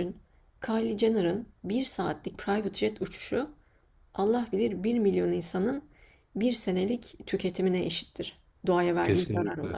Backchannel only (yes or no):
no